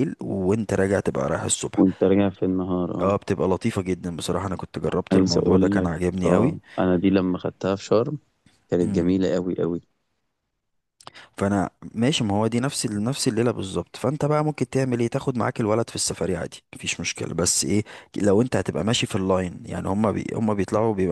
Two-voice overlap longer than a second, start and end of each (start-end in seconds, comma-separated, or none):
5.1-6.5